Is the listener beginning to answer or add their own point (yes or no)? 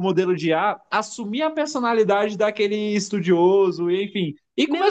no